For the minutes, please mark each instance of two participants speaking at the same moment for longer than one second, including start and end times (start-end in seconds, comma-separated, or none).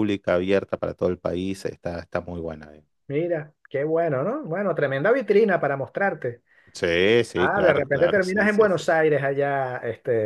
7.3-8.8